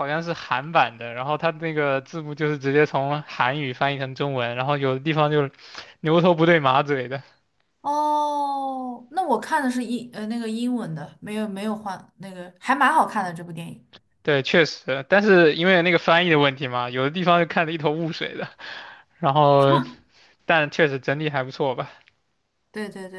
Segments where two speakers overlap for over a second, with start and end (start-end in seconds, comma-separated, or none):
none